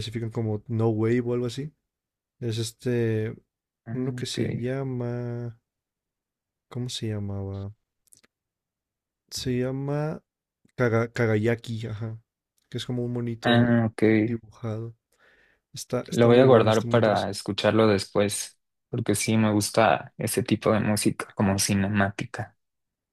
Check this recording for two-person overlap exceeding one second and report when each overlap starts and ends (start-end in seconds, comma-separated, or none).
16.1-17.4